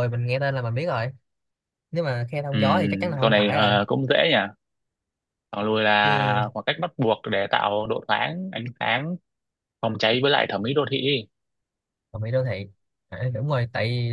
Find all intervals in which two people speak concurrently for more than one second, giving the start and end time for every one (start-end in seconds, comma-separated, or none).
2.5-3.8